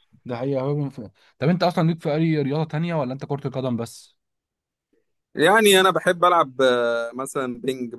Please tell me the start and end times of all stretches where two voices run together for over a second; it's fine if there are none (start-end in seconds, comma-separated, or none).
none